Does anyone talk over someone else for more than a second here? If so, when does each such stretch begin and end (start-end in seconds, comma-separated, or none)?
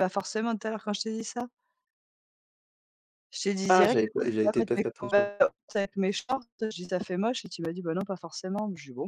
3.7-5.3